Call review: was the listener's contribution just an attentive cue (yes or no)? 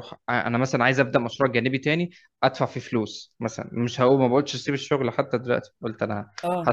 yes